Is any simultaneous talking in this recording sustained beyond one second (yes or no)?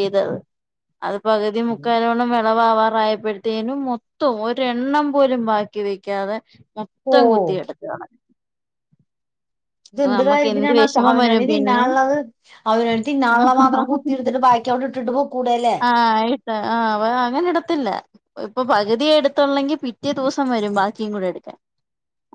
yes